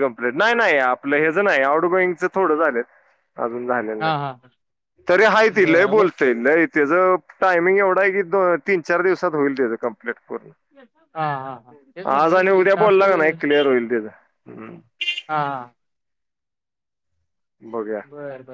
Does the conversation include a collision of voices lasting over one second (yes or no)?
no